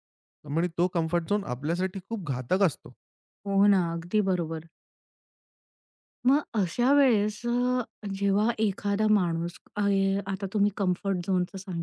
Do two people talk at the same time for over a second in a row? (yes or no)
no